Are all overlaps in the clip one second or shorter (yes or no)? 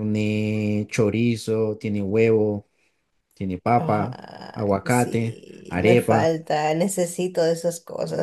no